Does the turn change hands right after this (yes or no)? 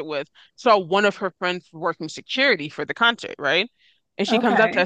no